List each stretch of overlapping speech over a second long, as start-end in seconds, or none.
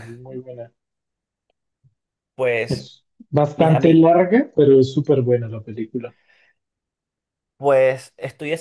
none